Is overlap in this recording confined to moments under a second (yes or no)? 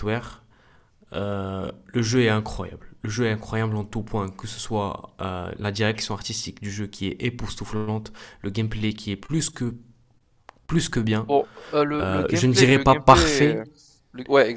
no